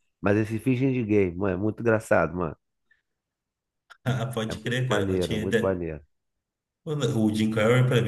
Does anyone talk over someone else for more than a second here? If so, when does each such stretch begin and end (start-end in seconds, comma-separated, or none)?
4.5-5.8